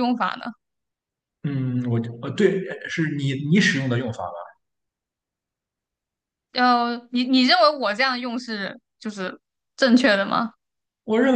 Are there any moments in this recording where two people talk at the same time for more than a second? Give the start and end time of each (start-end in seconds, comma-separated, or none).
none